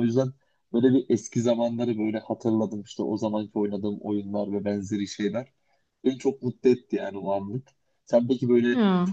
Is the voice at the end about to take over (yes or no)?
no